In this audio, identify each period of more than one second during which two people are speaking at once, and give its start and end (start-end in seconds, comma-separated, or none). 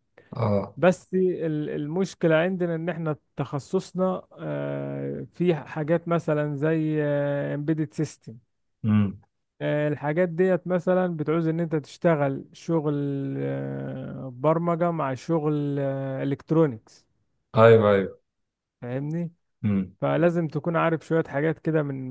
none